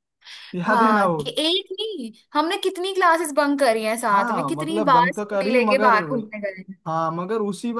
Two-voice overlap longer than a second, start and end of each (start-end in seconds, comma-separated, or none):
4.1-6.0